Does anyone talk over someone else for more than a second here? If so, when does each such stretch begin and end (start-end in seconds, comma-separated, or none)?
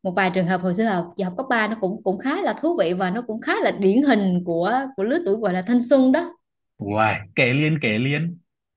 none